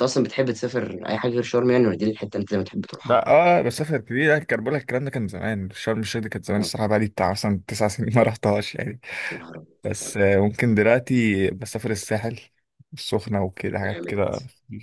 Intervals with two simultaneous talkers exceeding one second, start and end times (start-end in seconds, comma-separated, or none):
none